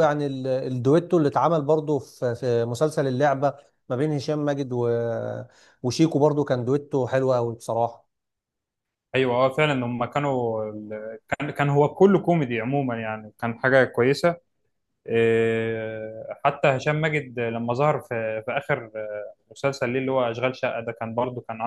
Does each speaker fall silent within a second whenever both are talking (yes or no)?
yes